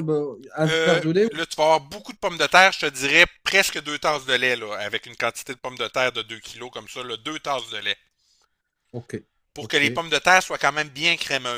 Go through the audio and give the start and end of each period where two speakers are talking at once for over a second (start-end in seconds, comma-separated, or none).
none